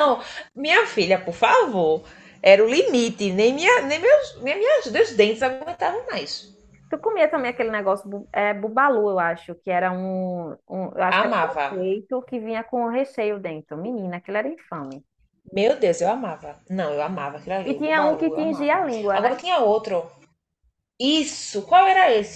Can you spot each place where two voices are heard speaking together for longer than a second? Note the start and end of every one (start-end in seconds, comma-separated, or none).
17.7-19.3